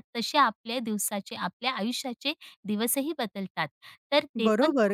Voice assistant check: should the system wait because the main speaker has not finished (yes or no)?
no